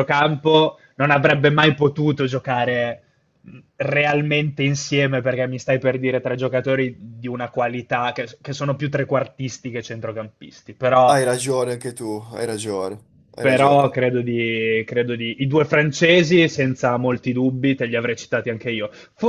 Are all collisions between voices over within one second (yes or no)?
yes